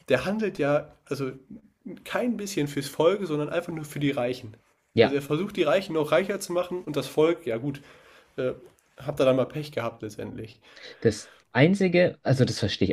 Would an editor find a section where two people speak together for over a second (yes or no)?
no